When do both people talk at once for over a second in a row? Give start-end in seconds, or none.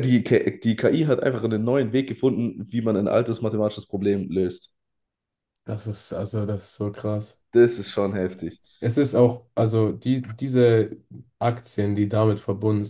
none